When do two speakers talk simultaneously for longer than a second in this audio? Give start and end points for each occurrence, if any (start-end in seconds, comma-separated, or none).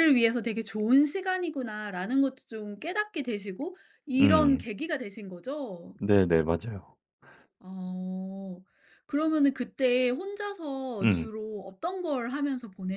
none